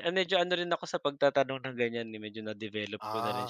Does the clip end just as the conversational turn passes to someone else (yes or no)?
yes